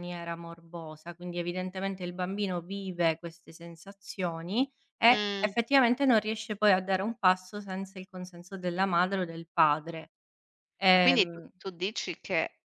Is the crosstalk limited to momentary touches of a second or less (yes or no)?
yes